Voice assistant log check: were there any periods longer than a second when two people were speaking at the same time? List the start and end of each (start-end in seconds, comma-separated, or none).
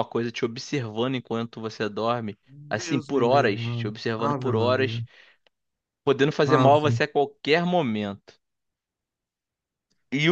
2.5-5.0